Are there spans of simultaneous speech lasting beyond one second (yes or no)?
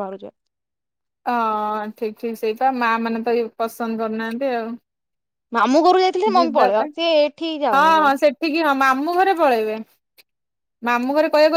no